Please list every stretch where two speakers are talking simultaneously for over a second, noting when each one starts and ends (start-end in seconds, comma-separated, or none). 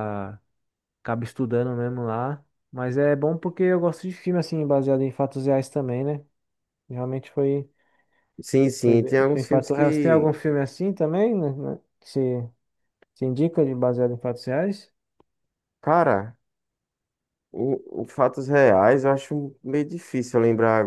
8.8-10.3